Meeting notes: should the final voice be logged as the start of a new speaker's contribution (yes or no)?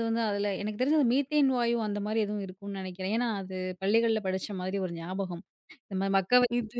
no